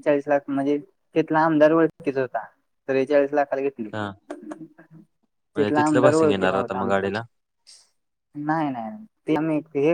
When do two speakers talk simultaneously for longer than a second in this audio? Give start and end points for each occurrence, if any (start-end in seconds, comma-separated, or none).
5.5-7.1